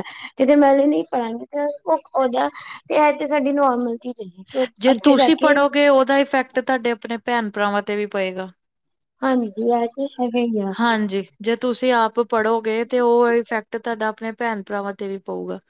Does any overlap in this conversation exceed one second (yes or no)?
no